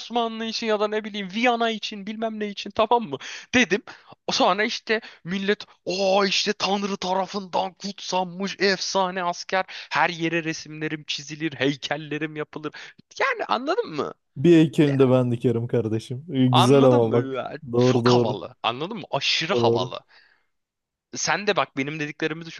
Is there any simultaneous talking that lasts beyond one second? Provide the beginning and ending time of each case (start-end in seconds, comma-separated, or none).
16.5-18.4